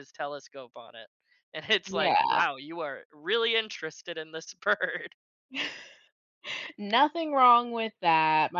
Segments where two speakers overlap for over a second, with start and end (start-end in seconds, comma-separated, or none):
none